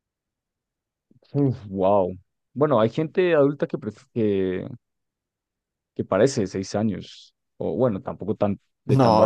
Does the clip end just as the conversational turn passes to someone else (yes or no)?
yes